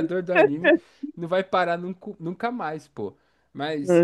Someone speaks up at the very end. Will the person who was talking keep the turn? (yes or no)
yes